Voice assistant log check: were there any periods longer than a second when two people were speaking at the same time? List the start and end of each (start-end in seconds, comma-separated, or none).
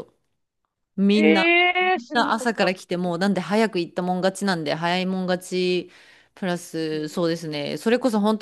1.1-3.1